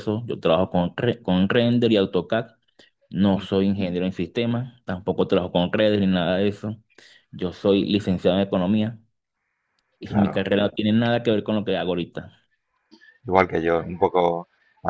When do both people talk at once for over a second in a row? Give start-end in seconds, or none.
none